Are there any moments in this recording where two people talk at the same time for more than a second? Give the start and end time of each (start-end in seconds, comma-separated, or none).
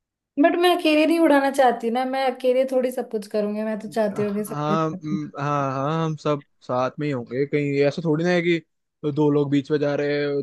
3.9-5.2